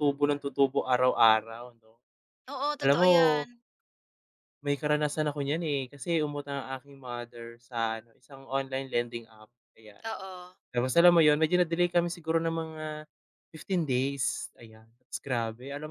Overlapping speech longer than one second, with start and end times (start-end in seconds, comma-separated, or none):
none